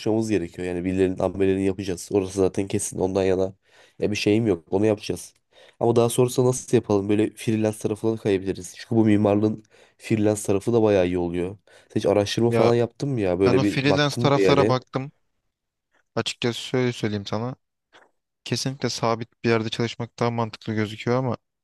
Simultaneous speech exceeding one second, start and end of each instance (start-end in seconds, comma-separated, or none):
13.4-14.8